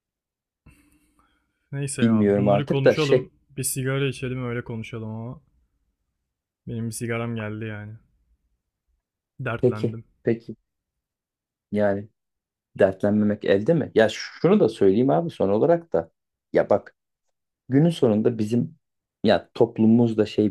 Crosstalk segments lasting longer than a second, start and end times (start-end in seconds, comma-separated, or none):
2.0-3.3